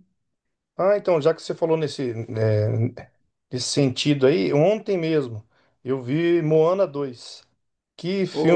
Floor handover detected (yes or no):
no